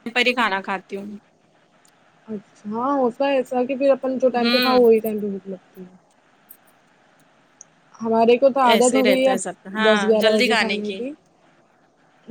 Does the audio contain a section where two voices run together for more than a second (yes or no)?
yes